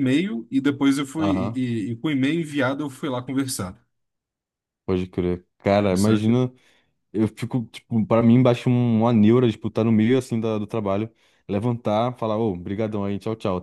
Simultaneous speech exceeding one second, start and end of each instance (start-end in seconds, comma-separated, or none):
none